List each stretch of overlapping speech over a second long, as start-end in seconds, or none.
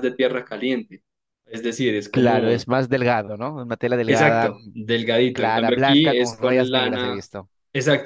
5.3-7.2